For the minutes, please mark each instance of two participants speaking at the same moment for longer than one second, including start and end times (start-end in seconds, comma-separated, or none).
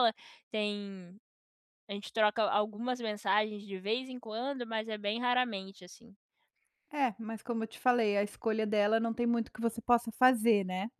none